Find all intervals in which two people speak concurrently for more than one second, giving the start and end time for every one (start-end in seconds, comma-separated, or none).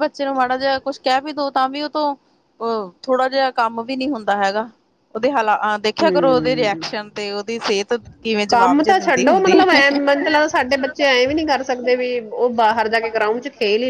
8.5-9.8